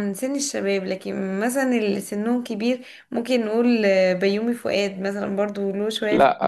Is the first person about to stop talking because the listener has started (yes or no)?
yes